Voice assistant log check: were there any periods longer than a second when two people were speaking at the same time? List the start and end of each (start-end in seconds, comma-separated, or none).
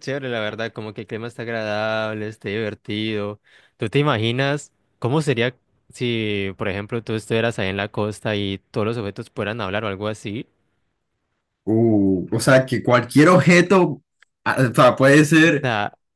none